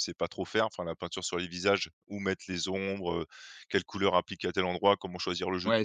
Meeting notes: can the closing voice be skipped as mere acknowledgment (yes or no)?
no